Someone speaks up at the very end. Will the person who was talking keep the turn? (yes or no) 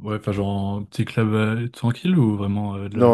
no